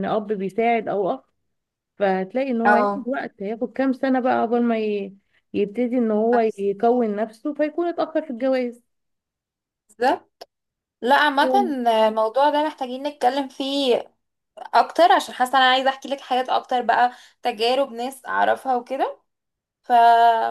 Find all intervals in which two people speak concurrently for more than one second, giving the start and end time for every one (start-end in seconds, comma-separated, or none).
none